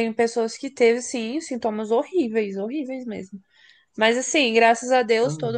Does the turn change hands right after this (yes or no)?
no